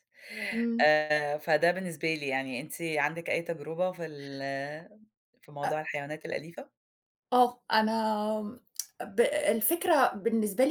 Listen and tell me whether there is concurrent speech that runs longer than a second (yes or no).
no